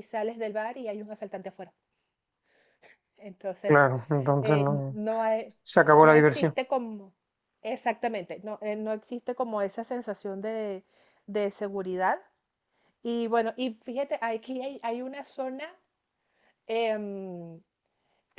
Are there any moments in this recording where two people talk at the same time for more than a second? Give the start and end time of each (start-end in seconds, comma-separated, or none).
none